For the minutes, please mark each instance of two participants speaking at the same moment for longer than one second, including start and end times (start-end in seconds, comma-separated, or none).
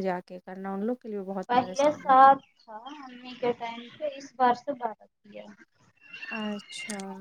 none